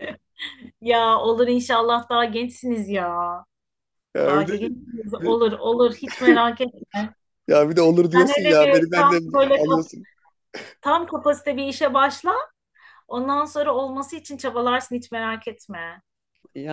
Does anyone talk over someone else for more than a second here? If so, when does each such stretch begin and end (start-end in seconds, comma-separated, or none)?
8.2-9.9